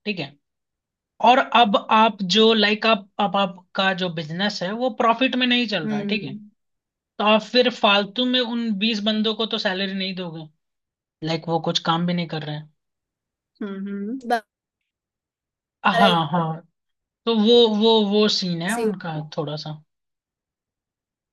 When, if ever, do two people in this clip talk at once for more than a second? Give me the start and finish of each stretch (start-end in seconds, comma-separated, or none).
none